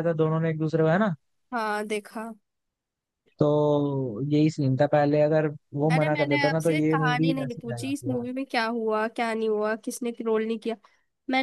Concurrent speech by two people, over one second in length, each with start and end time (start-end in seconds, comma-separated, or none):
5.9-8.2